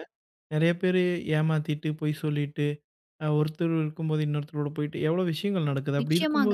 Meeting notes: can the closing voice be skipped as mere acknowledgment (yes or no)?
no